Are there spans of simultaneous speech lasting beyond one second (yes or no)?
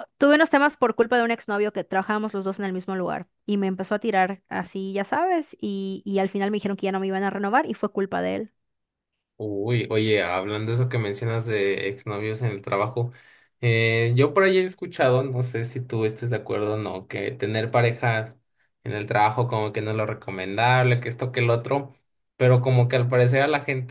no